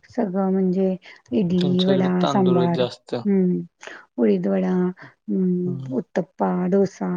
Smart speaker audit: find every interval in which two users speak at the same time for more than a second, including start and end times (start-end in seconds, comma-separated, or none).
1.6-3.1